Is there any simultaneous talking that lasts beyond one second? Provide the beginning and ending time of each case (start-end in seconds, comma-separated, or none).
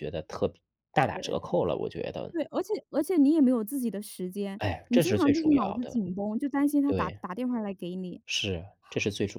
4.6-6.0